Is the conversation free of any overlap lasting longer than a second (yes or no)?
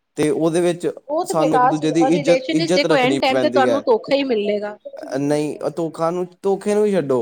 no